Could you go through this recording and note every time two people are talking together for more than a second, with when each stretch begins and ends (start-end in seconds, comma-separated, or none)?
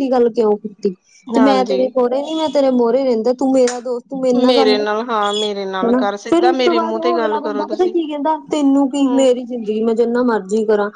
5.9-7.9